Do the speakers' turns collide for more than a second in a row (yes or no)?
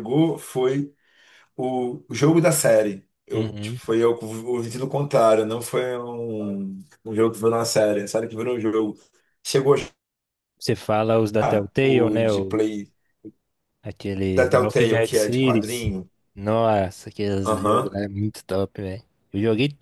yes